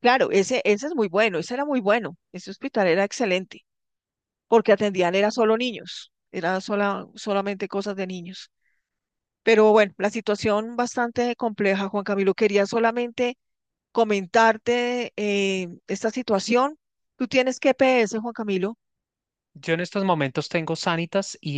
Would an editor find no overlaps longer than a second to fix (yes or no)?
yes